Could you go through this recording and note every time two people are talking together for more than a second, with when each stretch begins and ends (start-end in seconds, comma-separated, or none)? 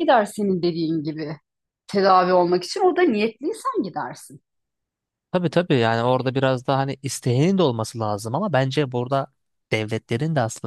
none